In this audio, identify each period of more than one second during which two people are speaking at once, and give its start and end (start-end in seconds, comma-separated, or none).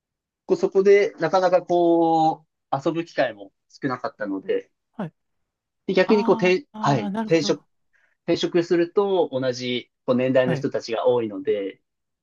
6.1-7.6